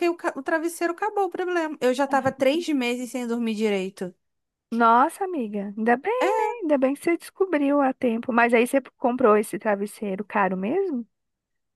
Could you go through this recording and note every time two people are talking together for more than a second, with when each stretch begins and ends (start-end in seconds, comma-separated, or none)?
none